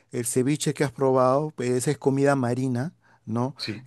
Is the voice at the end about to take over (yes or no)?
no